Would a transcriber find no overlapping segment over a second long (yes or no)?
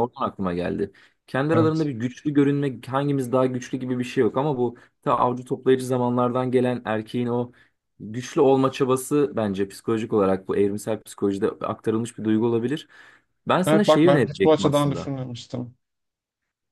no